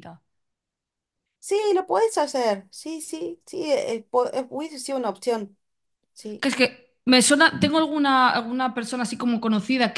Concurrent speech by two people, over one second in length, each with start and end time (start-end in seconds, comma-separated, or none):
none